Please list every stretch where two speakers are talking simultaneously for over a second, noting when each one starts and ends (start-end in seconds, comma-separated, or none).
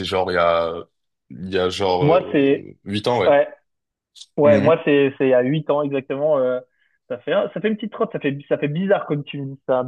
none